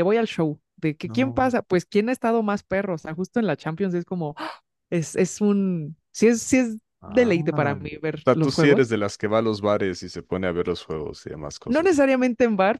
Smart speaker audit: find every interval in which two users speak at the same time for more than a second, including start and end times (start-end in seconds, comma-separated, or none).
7.0-8.9